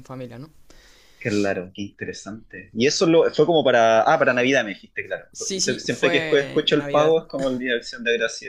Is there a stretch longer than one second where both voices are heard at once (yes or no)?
yes